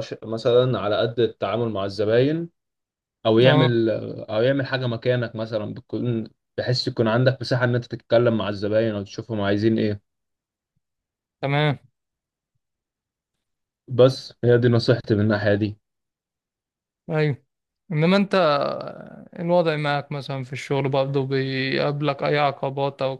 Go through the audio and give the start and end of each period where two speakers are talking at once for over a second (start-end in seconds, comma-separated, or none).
none